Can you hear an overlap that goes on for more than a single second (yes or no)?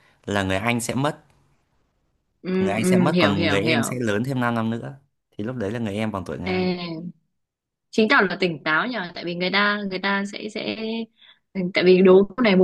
yes